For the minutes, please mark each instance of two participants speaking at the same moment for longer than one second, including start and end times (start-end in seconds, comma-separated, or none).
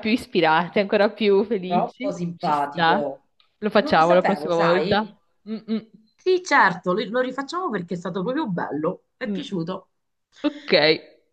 1.6-3.1, 3.8-5.0